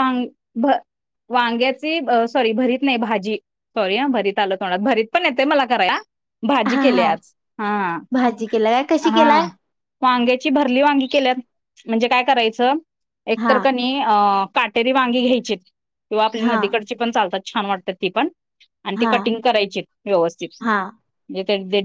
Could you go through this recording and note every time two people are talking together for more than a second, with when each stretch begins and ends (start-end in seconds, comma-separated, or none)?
none